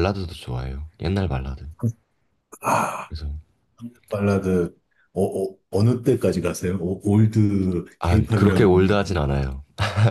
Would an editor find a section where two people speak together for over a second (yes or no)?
yes